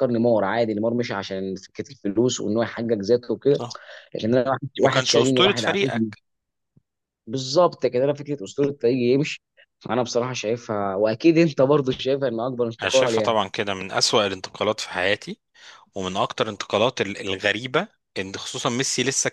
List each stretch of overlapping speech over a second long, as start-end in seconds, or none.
4.8-6.1